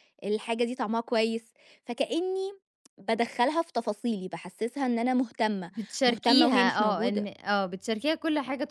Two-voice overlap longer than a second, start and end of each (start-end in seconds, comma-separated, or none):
5.7-7.3